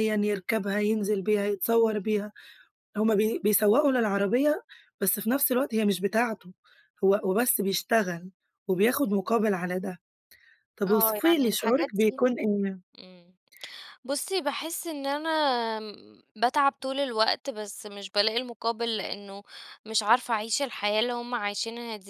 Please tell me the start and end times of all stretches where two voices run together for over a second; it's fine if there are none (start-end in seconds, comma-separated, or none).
10.9-12.2